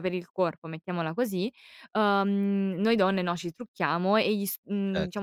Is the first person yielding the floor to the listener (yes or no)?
no